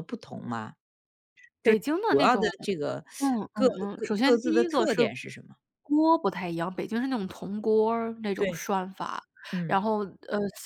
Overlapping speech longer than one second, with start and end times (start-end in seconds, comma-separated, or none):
3.5-5.0